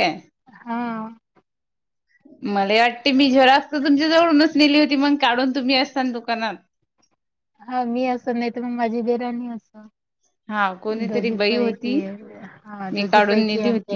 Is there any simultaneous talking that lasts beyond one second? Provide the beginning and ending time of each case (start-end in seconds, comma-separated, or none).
10.5-11.9